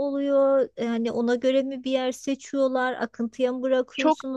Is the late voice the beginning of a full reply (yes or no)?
yes